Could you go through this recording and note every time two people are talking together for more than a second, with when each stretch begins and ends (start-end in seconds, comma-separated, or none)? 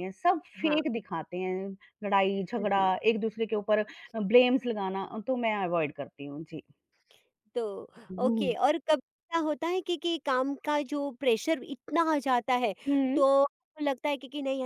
none